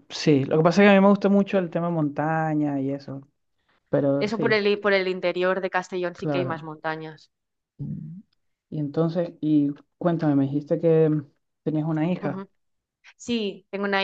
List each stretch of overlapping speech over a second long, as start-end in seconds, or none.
none